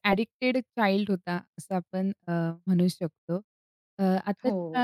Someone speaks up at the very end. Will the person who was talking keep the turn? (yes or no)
yes